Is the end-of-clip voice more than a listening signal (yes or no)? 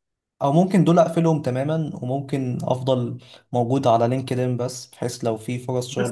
yes